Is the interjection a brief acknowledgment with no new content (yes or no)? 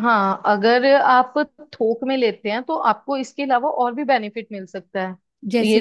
yes